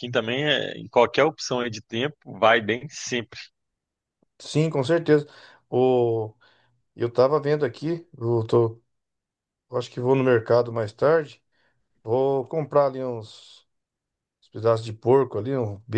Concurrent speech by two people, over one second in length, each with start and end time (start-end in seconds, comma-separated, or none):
none